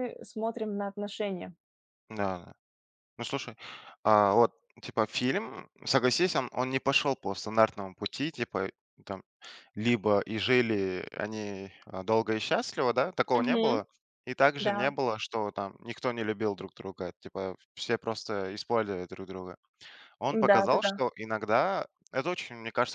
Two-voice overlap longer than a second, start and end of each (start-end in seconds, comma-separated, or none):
none